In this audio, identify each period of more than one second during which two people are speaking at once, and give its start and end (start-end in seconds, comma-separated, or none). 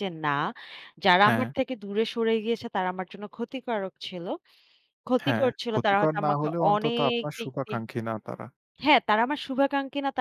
5.2-7.8